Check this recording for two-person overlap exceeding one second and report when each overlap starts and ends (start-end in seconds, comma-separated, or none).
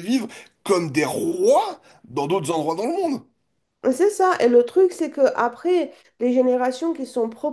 none